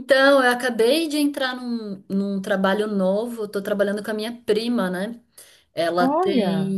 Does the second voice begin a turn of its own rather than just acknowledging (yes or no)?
no